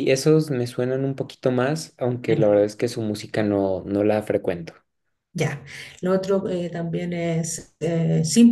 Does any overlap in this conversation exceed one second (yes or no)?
no